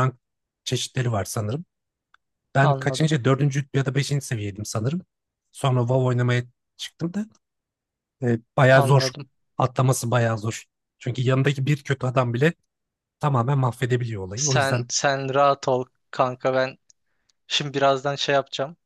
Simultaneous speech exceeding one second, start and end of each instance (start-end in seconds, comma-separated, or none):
none